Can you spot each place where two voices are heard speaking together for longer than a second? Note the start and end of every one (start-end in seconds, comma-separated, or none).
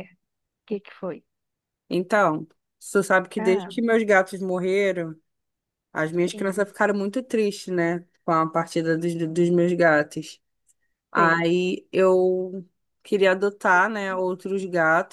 none